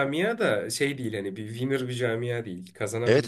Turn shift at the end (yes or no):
yes